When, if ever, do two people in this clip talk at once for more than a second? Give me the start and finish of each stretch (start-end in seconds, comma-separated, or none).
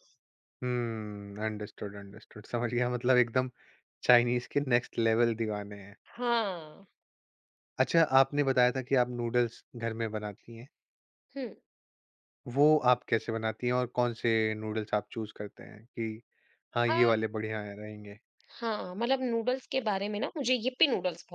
none